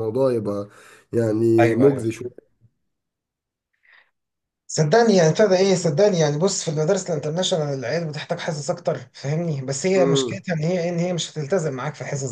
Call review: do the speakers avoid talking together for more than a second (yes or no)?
yes